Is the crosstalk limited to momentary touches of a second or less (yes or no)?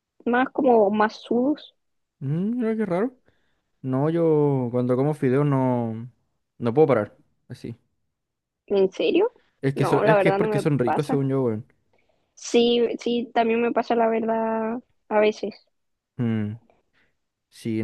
no